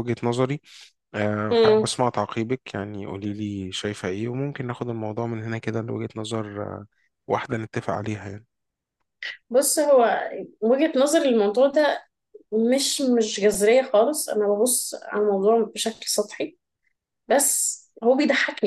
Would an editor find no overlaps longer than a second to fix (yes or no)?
yes